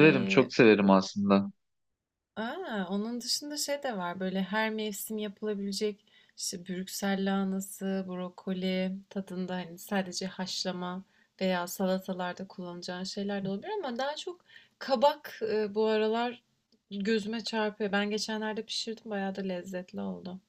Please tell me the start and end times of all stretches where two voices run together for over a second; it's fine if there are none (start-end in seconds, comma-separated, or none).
none